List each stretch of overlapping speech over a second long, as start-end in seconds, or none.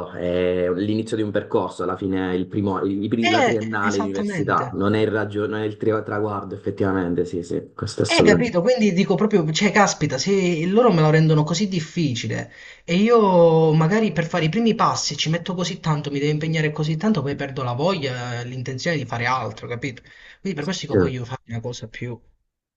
3.2-4.7